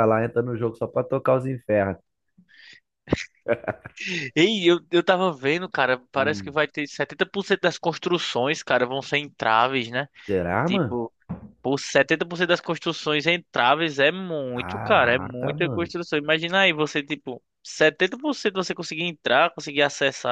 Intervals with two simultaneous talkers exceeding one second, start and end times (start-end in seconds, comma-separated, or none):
14.5-15.9